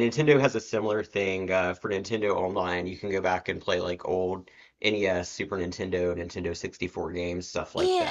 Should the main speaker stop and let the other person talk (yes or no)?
yes